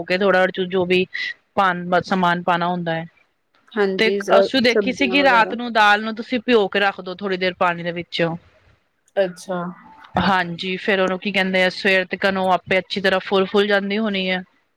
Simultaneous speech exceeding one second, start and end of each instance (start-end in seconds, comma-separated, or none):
4.0-5.5